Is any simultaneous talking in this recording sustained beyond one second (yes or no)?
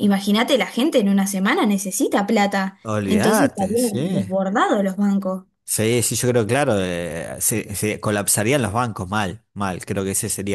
yes